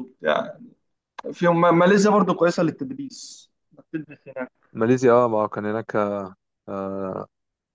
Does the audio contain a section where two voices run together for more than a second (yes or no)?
no